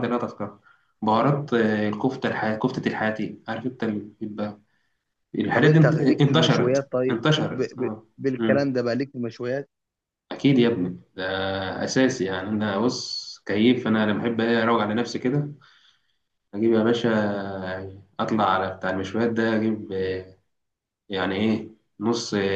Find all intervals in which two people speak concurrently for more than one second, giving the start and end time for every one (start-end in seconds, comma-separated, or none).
5.5-8.1